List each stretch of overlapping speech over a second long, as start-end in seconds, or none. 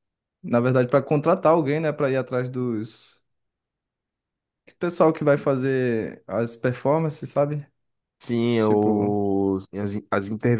none